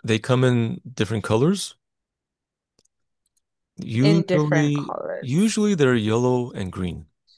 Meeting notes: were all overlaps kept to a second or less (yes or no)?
no